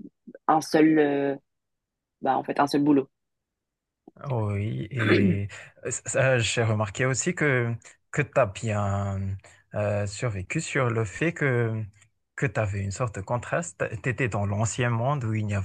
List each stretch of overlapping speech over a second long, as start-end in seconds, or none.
none